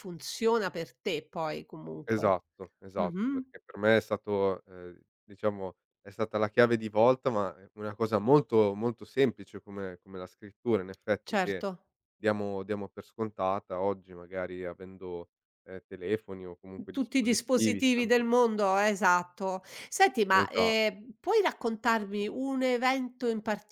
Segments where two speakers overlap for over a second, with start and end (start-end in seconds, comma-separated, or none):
16.9-18.3